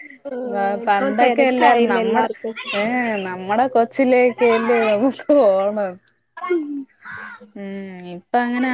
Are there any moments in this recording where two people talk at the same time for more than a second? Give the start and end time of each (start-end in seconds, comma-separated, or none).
0.9-2.3